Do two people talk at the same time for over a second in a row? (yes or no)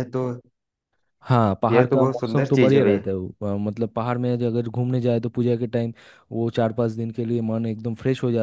yes